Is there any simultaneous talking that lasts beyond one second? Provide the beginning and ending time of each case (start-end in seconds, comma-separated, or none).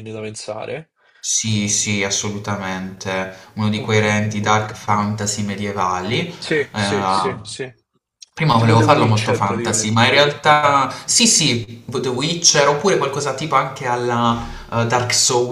8.6-10.0